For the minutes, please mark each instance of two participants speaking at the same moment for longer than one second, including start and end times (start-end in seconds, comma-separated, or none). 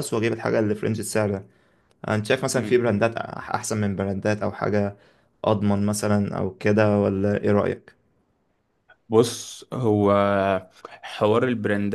none